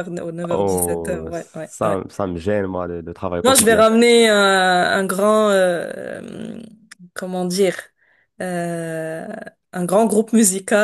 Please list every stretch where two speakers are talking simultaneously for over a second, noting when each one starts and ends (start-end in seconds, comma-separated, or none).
0.5-2.0